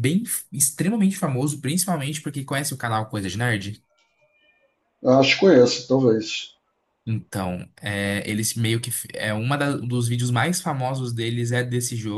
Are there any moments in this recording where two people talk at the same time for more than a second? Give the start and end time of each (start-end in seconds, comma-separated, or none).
none